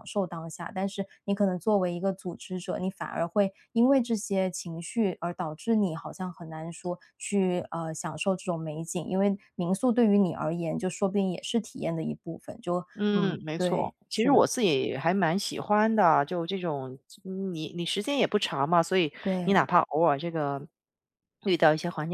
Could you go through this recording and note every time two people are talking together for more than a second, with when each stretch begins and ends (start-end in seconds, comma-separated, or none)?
13.0-14.5